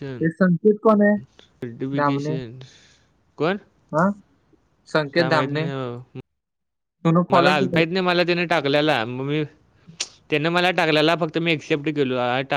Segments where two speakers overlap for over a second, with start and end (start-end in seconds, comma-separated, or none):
none